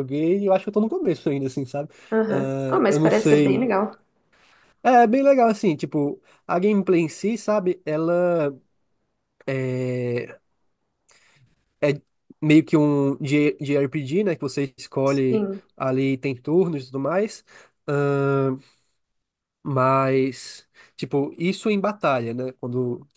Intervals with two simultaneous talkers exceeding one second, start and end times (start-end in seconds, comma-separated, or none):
2.1-3.7